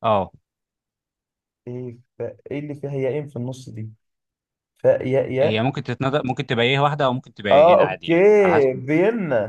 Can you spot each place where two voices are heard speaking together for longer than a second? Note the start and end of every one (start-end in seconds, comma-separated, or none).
7.5-8.8